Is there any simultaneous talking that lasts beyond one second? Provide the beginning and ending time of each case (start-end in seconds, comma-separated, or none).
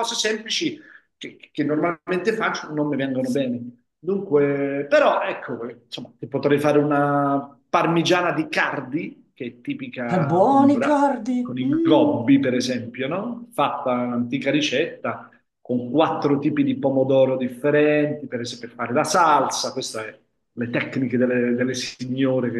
10.1-12.2